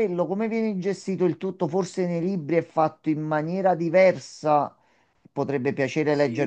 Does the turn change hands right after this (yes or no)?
no